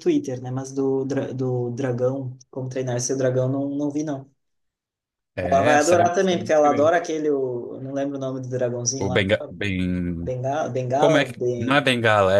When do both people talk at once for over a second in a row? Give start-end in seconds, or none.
5.4-7.0